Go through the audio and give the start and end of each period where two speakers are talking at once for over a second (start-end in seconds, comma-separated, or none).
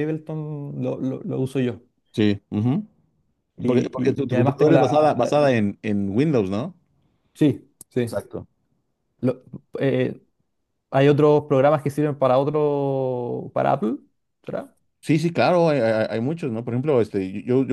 3.6-5.2